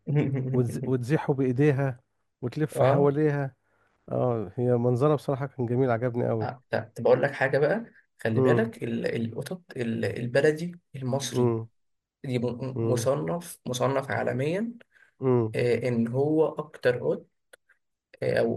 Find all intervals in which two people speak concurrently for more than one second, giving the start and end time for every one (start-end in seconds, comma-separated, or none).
none